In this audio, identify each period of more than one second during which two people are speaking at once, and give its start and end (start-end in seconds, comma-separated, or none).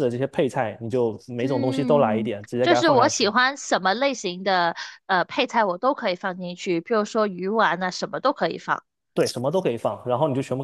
1.4-3.3